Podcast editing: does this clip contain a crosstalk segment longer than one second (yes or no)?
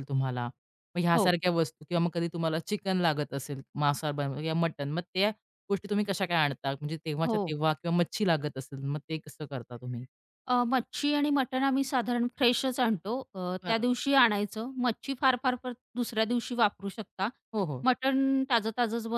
no